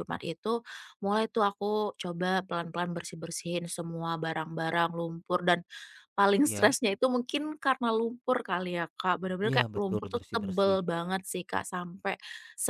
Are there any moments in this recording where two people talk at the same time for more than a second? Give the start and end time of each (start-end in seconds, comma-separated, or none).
9.5-10.8